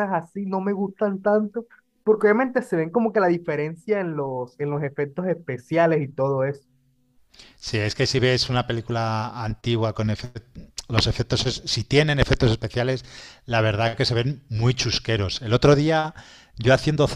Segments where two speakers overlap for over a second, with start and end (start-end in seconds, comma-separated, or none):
none